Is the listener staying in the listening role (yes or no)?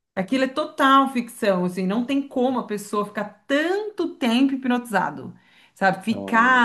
yes